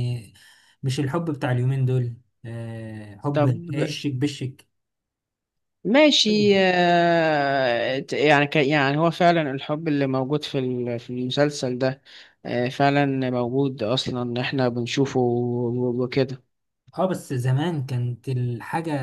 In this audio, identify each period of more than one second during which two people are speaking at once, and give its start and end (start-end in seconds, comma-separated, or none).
none